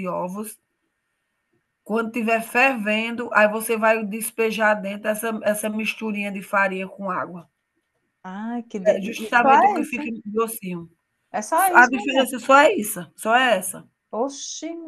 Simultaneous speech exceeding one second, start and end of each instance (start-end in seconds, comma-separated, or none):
8.9-10.1